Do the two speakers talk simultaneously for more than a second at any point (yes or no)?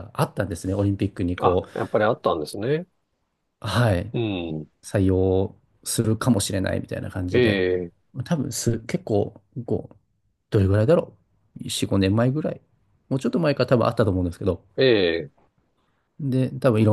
no